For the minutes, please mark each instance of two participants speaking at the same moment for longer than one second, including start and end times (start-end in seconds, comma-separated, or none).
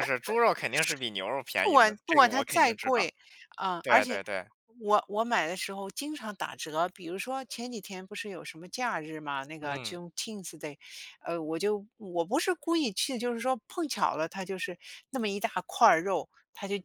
1.6-3.1